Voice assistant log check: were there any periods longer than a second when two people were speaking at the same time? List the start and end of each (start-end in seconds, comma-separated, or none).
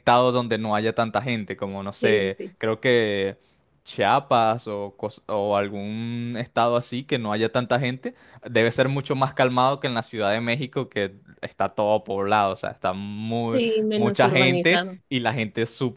13.5-15.0